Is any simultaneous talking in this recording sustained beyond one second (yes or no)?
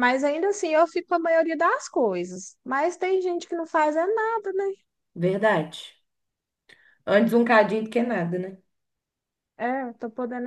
no